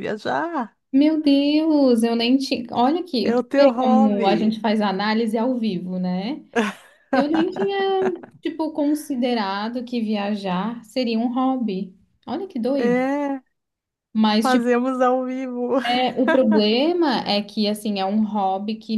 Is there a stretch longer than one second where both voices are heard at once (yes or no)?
yes